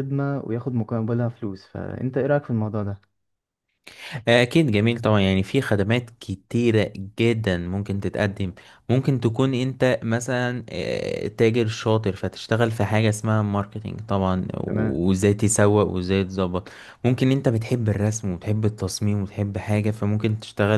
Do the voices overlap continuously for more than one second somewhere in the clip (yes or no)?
no